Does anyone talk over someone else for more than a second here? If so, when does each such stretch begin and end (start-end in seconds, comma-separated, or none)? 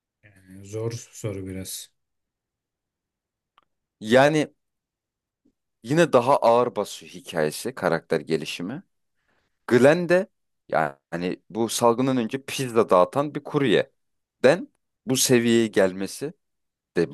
none